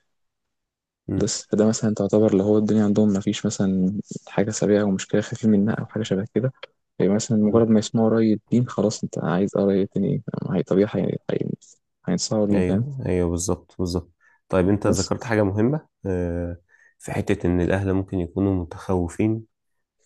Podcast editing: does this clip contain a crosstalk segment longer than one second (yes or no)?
no